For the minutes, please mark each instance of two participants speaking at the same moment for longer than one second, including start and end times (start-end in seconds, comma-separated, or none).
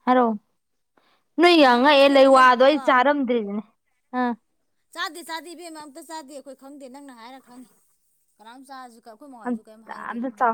1.6-3.0